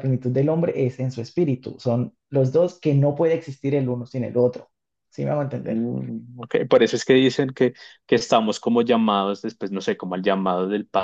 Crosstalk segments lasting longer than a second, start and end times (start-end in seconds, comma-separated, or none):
none